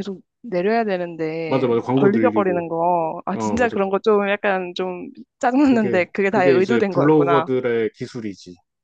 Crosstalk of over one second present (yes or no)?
yes